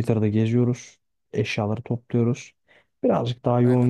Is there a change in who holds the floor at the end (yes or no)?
no